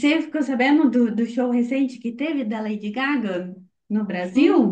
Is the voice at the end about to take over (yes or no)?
yes